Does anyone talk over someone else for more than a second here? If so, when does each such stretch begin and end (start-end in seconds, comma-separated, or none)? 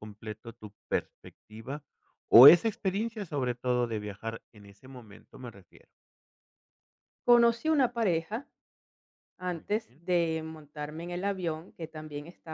none